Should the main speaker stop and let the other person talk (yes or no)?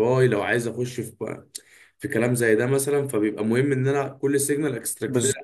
no